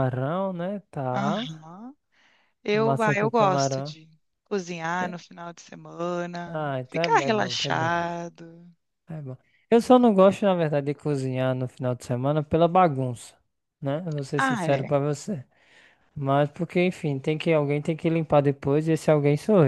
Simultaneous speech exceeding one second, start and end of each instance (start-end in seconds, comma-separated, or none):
2.7-4.0, 6.5-7.9